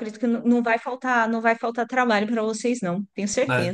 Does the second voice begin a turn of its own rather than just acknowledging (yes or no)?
yes